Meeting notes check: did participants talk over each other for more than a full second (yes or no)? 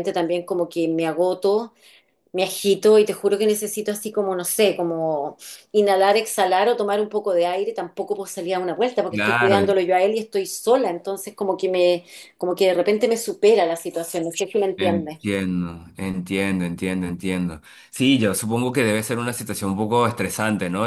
no